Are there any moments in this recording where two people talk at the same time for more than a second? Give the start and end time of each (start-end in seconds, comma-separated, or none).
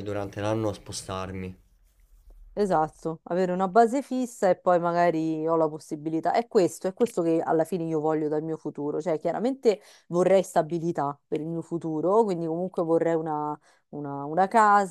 none